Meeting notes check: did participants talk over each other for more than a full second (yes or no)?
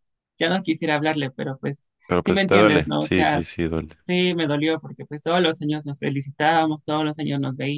yes